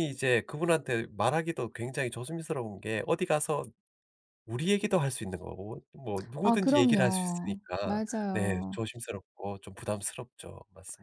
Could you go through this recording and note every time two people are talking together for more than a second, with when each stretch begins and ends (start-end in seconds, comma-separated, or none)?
6.4-8.8